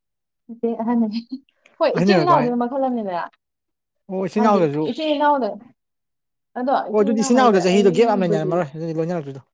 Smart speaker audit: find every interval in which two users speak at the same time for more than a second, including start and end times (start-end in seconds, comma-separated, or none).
6.9-8.6